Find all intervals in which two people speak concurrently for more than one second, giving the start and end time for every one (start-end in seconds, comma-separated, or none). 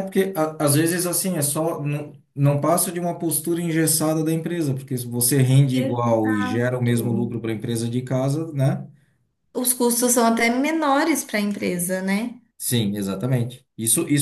5.7-7.2